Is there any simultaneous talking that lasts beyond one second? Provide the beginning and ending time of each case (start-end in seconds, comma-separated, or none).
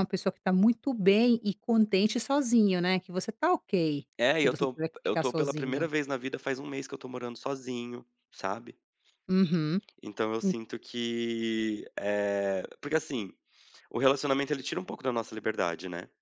4.2-5.9